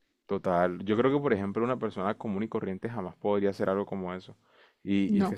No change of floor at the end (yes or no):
yes